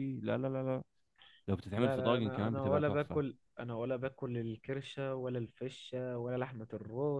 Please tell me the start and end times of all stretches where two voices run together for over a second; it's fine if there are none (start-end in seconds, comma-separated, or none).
1.8-3.2